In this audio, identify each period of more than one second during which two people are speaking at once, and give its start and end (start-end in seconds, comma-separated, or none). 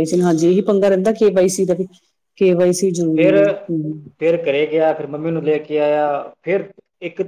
none